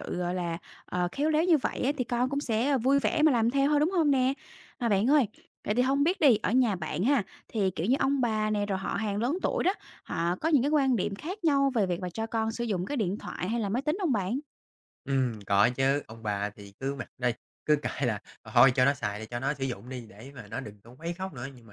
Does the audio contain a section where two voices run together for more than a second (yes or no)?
no